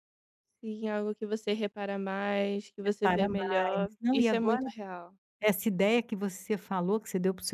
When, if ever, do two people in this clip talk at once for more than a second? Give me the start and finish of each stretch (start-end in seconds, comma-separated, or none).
2.9-4.6